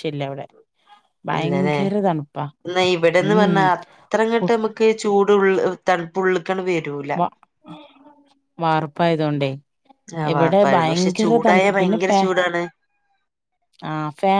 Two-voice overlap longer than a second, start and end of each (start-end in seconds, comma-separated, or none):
10.3-12.2